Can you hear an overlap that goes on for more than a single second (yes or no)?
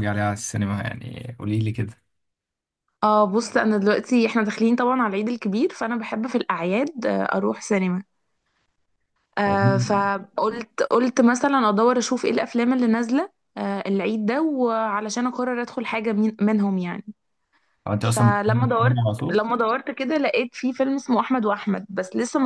yes